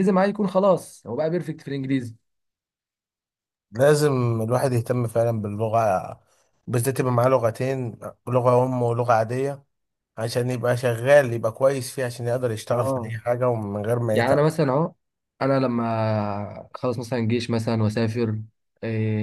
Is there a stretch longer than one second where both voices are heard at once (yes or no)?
no